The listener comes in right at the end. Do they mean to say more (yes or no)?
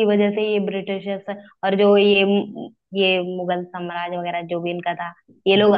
no